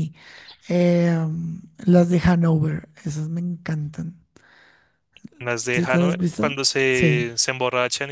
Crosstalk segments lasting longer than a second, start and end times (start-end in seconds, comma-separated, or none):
5.7-7.3